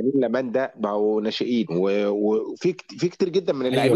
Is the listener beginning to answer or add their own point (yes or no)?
yes